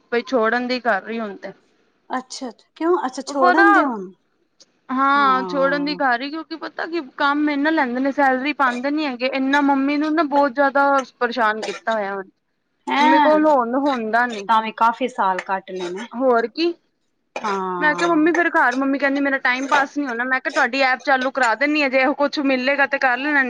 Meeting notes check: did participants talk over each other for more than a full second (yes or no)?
no